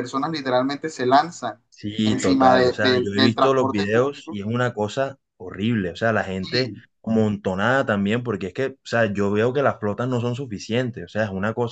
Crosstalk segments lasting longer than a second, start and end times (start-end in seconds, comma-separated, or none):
2.0-4.4